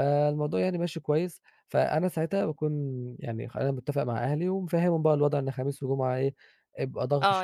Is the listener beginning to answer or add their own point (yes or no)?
yes